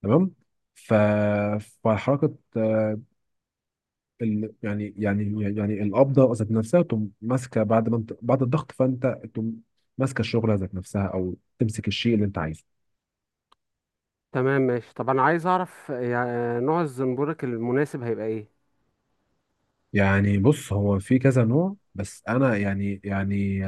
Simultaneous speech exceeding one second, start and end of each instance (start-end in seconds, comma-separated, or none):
none